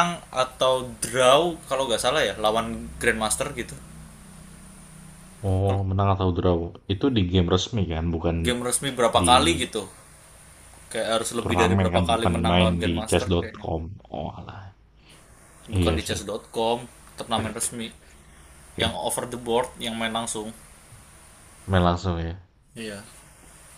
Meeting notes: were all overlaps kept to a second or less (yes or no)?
no